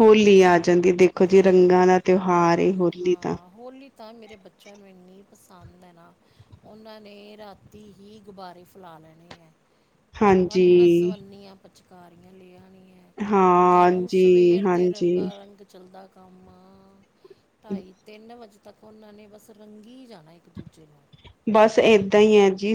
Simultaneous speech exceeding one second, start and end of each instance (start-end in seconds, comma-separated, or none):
13.7-15.3